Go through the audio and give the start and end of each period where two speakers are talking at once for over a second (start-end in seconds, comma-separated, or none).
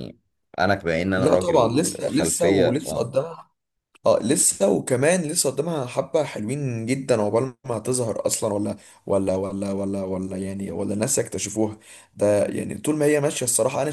1.2-3.1